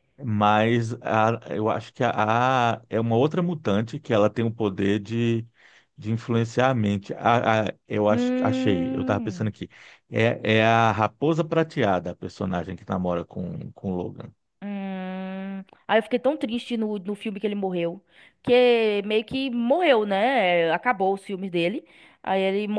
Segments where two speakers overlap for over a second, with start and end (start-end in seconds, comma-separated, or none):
8.1-9.5